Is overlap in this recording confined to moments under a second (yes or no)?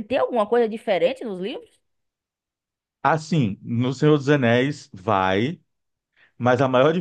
yes